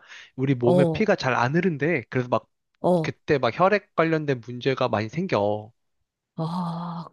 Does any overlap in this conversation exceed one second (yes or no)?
no